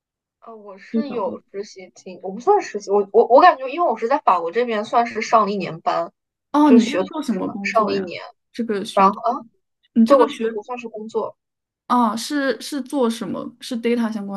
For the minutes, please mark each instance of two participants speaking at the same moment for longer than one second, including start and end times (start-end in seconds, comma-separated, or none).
6.7-8.1